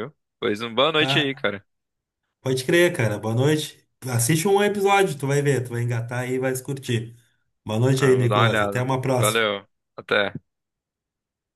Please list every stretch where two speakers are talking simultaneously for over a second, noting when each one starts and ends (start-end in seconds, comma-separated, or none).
7.9-9.5